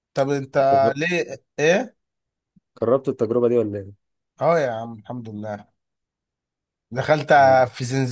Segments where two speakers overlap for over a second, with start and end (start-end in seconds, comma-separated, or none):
none